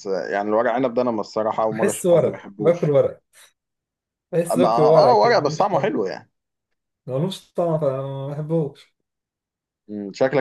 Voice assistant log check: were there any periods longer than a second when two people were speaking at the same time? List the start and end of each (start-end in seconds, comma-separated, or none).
1.7-3.0, 4.5-6.0